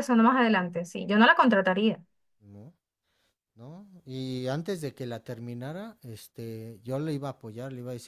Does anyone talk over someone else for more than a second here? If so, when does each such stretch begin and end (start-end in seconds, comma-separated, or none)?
none